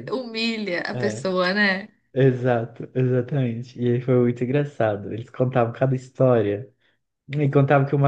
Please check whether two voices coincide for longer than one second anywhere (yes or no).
no